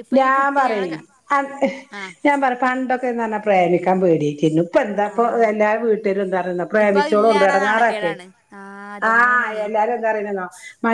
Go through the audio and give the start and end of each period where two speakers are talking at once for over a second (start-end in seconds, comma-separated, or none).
6.8-8.2